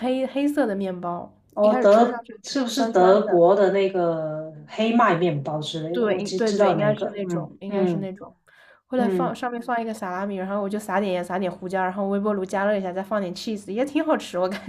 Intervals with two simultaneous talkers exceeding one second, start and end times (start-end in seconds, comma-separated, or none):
1.5-3.4, 5.9-8.1